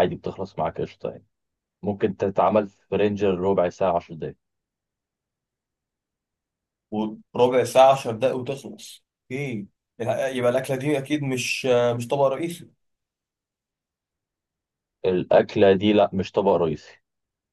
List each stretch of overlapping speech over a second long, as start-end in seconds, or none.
none